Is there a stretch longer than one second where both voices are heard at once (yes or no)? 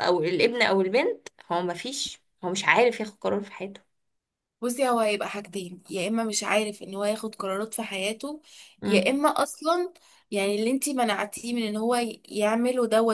no